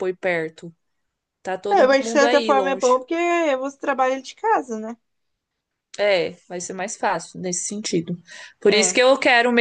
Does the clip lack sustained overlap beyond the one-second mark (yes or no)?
no